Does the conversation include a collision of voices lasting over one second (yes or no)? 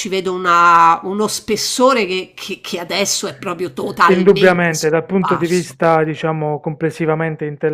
yes